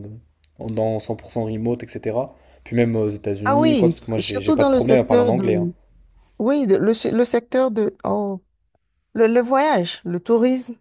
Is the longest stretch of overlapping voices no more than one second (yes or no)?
no